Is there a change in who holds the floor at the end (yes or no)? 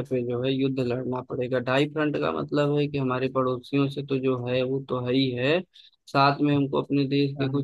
no